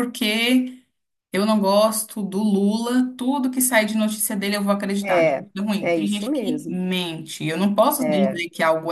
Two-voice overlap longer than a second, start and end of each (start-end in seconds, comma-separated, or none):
5.0-6.8